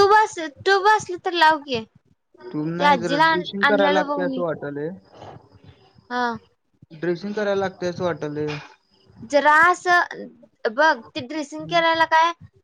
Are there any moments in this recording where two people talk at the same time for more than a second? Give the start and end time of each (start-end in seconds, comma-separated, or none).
2.8-4.4